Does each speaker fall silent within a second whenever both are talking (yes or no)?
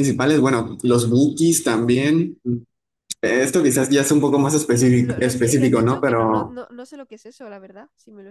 no